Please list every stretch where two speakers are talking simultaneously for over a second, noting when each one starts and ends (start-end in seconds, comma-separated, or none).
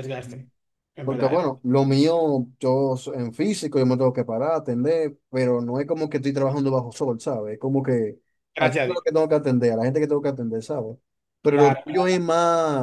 none